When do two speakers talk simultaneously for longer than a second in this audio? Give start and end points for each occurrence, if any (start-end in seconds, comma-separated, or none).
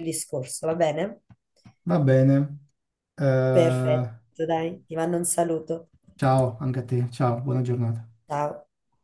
none